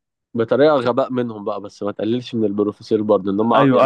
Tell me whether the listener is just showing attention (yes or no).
no